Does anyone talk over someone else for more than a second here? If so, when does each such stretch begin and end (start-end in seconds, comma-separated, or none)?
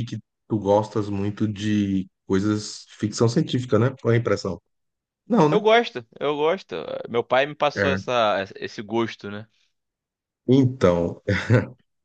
none